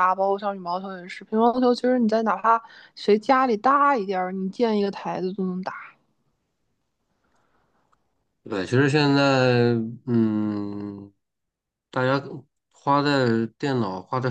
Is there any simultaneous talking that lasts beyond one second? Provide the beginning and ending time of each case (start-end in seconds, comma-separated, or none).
none